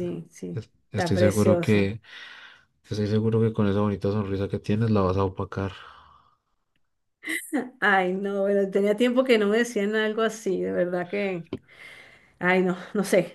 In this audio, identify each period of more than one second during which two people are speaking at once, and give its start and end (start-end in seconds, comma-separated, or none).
0.5-1.9